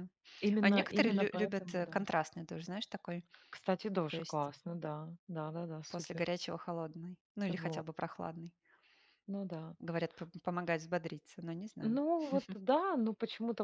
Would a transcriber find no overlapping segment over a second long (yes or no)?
no